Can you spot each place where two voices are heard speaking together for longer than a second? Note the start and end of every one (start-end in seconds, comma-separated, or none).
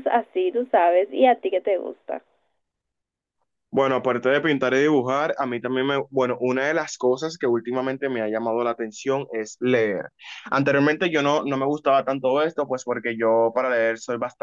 none